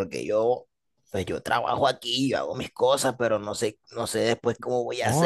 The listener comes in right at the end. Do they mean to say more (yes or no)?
yes